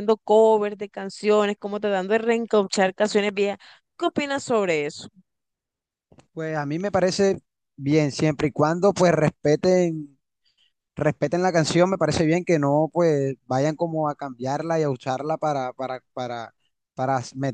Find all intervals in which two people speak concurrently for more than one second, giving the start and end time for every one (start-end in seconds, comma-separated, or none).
none